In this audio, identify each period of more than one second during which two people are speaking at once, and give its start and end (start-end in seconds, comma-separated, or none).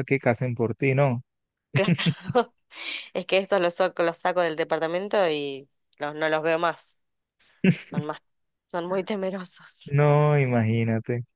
none